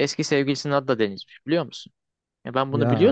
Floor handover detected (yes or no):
no